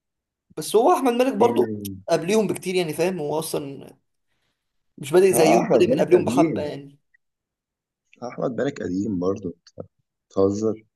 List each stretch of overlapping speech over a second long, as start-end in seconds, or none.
5.3-6.8